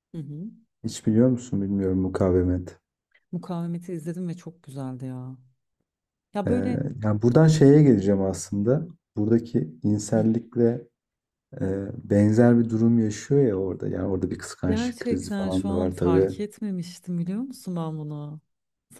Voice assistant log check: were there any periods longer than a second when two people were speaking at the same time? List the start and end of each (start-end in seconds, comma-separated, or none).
14.6-16.3